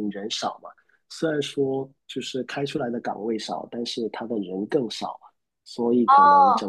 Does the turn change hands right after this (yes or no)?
no